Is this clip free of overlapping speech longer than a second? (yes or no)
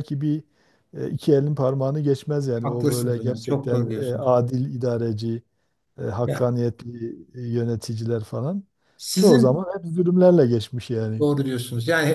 no